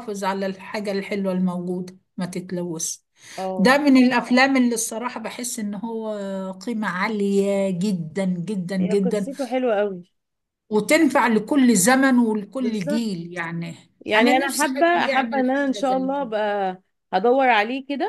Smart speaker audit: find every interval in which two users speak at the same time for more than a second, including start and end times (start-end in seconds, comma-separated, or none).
14.2-16.3